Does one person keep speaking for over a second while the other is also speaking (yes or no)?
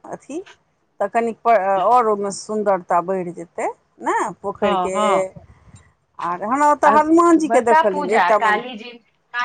no